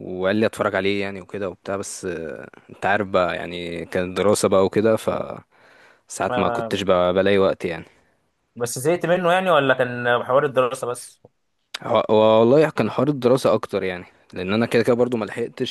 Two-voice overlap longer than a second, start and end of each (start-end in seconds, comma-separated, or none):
none